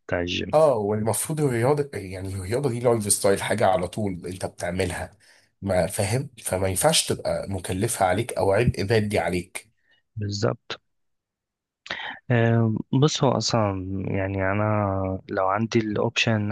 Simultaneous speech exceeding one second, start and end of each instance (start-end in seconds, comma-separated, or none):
none